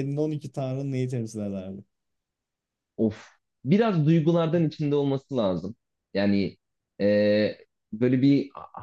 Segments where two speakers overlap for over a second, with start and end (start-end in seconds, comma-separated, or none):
none